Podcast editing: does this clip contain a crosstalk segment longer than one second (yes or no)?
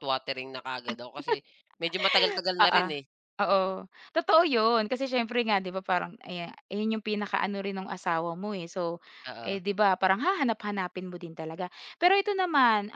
no